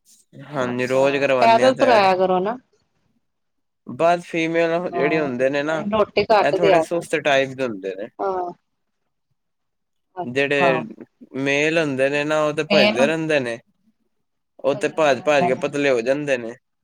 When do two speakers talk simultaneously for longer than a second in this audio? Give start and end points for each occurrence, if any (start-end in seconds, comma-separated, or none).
0.7-2.1